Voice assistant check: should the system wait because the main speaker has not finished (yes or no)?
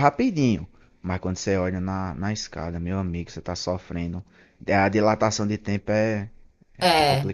no